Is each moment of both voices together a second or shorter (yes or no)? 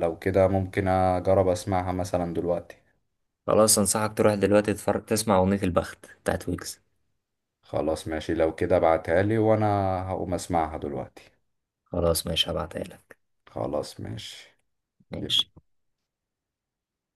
yes